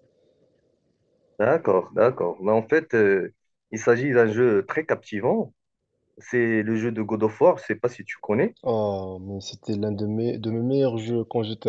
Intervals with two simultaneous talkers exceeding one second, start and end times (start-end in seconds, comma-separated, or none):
none